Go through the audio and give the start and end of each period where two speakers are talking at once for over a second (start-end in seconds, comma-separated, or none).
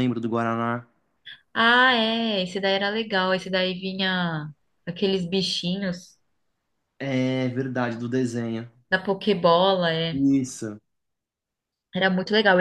none